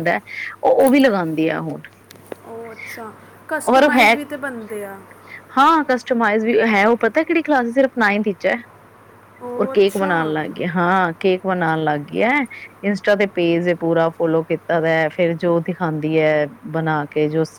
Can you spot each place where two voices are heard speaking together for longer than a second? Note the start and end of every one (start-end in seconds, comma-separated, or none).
none